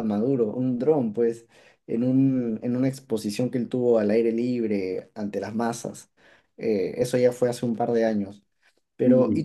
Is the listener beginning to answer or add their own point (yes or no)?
no